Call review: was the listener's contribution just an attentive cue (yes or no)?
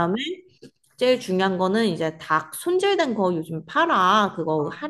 yes